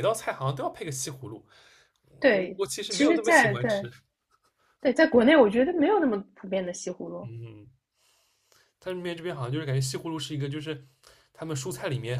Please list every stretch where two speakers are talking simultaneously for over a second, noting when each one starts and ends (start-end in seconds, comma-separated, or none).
2.3-3.9